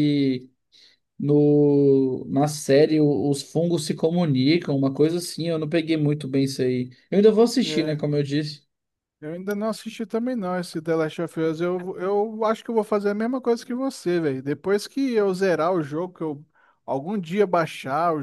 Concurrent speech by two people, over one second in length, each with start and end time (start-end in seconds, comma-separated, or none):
none